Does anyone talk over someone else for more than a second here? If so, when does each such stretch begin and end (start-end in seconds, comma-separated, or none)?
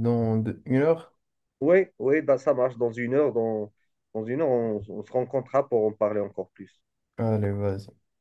none